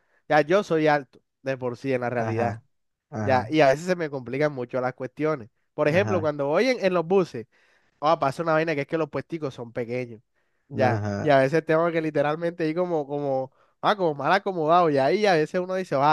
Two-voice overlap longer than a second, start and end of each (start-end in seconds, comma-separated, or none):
none